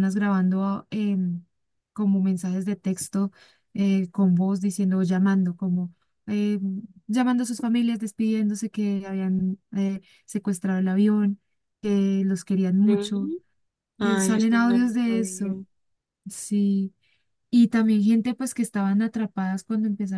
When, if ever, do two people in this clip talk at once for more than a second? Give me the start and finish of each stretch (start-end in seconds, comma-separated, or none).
14.0-15.5